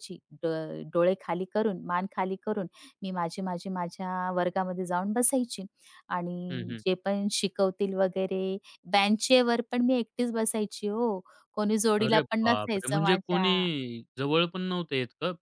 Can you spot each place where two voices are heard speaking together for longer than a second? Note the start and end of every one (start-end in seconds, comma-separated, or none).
12.0-13.5